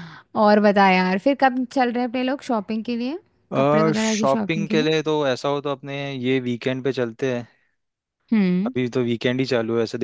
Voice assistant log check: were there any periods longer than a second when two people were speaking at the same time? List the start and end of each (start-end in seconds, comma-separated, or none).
3.6-4.9